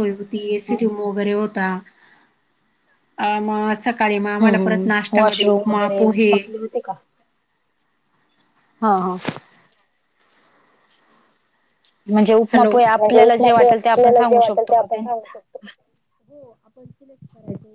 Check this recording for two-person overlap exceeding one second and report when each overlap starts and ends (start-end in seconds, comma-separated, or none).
4.4-6.3, 12.5-14.9